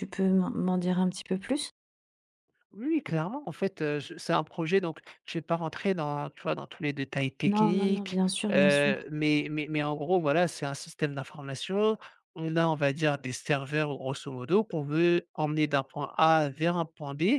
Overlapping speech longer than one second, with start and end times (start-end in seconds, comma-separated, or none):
7.5-9.1